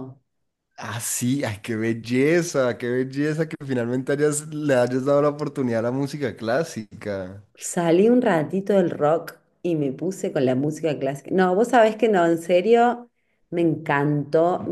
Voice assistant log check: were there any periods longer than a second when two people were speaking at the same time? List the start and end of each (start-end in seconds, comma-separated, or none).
none